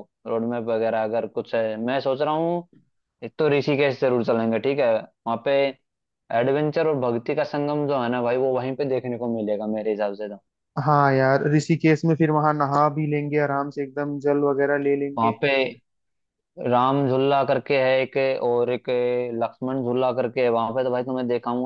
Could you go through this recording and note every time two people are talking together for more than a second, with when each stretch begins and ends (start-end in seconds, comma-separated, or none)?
none